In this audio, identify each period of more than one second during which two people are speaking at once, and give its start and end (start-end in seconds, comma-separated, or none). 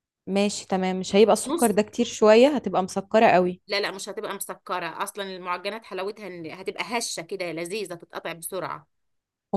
none